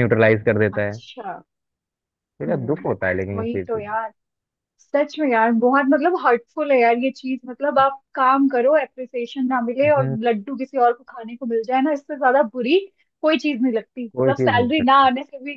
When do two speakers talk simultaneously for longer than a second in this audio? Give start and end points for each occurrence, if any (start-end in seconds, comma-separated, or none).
2.5-3.8